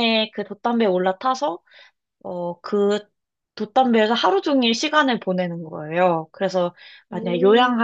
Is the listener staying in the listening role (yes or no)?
yes